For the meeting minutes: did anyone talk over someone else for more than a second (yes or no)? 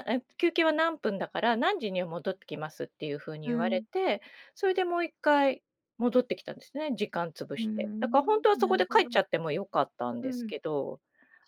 yes